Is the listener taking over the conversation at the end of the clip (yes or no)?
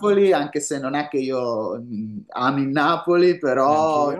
no